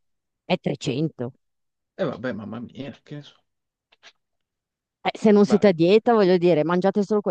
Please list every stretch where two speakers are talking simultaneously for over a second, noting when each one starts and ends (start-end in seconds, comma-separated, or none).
none